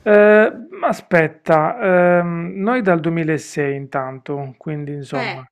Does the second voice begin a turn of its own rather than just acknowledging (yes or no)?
yes